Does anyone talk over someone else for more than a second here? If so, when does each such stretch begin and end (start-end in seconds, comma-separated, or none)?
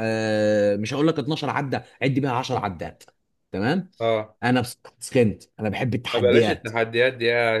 none